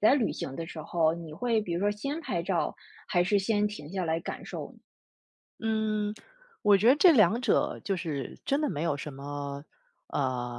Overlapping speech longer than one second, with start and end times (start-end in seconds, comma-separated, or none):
none